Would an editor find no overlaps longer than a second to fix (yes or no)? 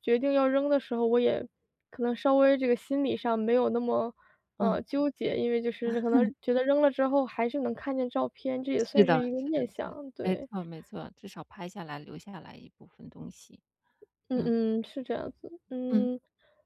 no